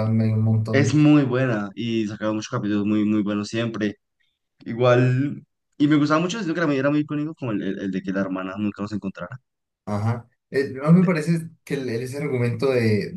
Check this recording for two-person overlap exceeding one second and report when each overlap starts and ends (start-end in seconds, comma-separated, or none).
none